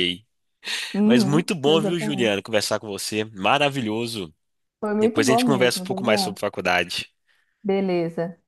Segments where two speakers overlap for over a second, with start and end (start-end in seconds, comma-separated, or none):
1.1-2.3, 5.0-6.4